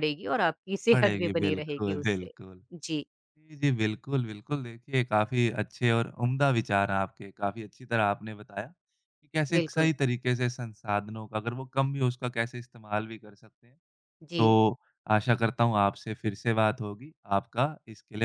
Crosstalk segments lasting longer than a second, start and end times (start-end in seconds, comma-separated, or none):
0.9-2.3